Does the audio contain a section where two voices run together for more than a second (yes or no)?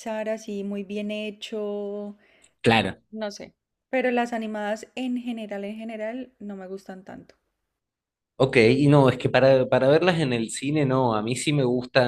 no